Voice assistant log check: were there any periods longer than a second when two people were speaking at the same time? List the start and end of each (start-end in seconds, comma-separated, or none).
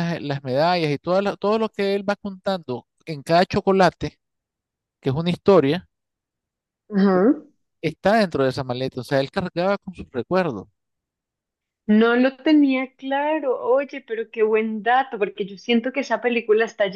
none